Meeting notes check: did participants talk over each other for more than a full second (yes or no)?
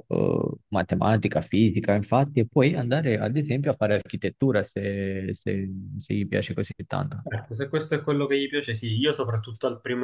no